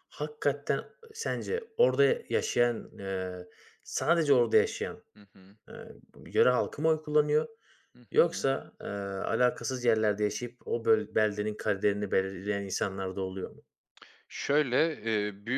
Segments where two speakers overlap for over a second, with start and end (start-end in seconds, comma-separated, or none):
none